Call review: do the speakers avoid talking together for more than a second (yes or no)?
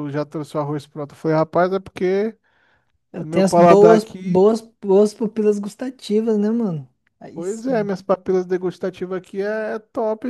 no